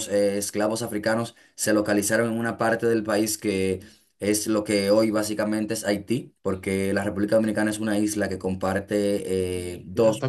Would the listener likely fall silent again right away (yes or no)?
no